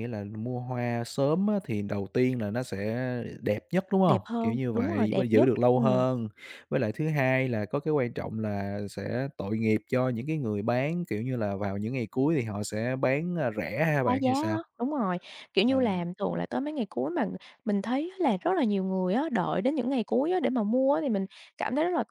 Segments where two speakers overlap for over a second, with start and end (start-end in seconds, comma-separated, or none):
4.1-6.0